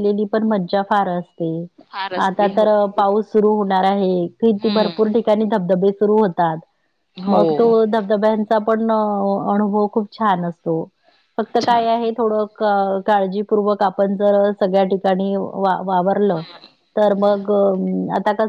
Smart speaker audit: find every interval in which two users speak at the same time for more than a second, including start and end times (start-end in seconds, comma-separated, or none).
none